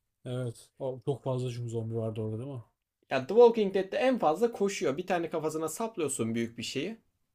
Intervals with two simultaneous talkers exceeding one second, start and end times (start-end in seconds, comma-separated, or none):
none